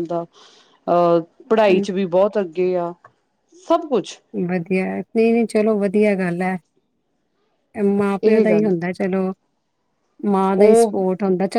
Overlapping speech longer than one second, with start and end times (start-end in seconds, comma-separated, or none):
none